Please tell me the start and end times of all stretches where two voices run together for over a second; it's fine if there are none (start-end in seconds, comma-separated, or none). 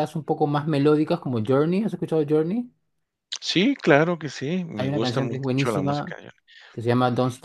4.8-6.2